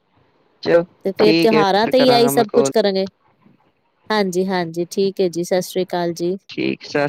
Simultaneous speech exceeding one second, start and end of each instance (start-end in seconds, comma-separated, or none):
1.2-2.7